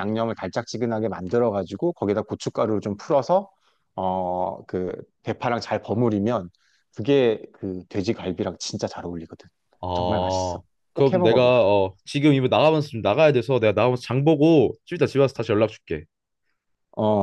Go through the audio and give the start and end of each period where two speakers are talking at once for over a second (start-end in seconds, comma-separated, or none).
9.9-11.7